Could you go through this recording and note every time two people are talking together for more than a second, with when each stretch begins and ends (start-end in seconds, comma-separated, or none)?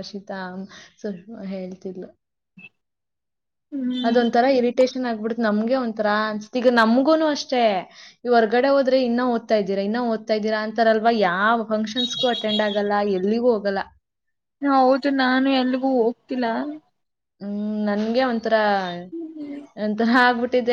none